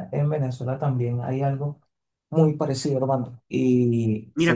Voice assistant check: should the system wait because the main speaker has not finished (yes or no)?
no